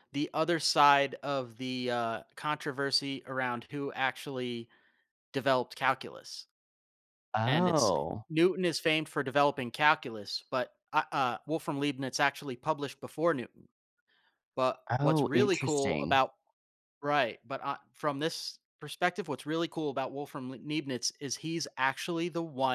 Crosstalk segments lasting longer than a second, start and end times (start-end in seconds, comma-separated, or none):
14.9-16.2